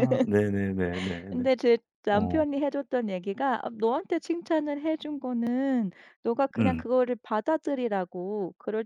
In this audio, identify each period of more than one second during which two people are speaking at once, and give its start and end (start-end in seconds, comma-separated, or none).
none